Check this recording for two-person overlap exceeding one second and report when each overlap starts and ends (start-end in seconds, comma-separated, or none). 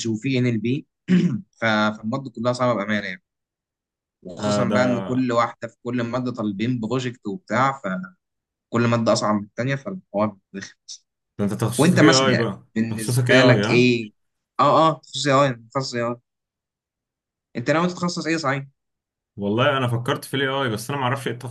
11.8-13.9